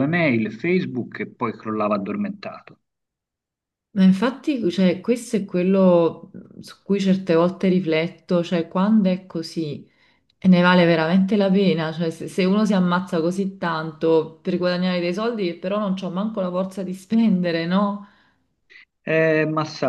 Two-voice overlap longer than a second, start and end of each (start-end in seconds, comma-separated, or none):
none